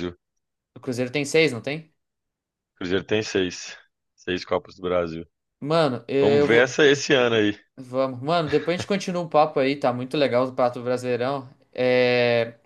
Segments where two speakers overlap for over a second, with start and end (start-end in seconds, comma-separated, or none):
none